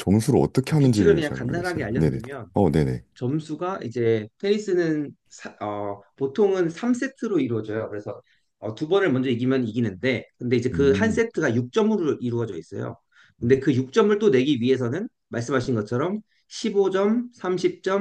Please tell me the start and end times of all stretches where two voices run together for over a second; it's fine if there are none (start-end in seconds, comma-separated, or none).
0.8-2.2